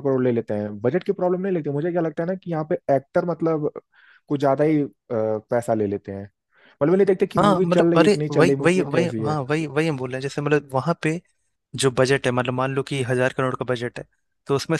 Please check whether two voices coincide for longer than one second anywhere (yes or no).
yes